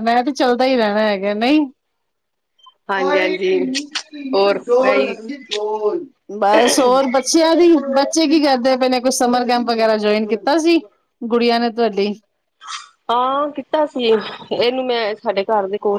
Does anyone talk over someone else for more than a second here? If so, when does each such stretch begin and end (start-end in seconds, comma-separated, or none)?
none